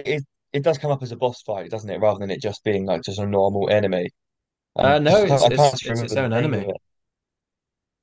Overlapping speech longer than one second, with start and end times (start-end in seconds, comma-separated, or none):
4.8-6.7